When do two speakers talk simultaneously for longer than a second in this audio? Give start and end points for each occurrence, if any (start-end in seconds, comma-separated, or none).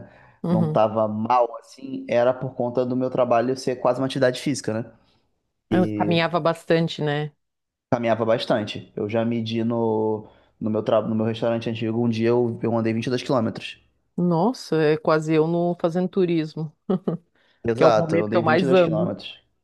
17.8-19.1